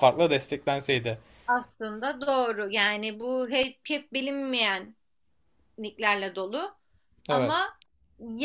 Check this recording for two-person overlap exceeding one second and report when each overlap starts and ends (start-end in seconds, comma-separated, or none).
none